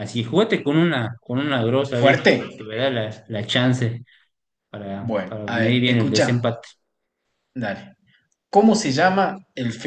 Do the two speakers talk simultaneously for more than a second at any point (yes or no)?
yes